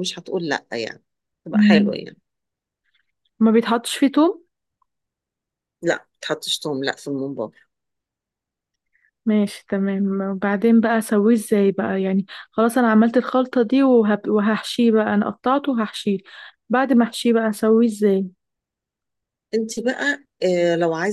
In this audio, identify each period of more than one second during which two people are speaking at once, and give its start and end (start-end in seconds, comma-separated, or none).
none